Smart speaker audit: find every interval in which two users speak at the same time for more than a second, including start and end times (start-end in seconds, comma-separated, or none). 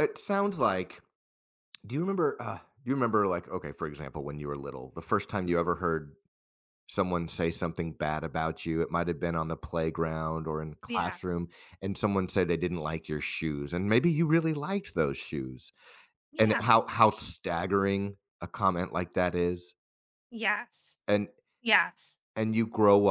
none